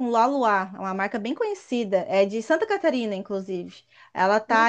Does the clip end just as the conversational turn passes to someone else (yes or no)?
no